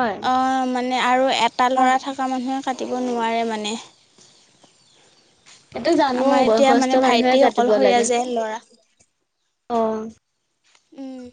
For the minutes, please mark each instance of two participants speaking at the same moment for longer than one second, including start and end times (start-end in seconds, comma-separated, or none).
6.2-8.0